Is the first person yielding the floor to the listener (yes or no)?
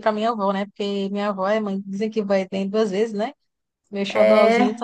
no